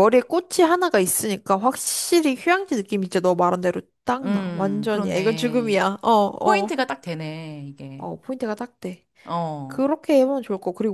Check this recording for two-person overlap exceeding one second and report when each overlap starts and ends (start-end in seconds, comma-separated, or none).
4.2-5.8